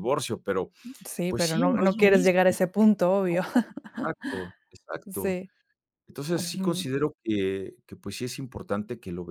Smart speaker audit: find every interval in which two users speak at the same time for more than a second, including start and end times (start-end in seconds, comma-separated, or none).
1.3-2.6